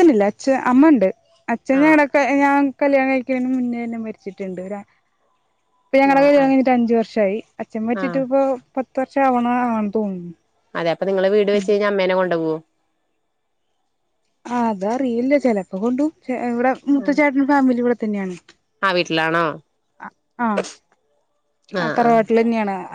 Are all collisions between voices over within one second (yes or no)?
yes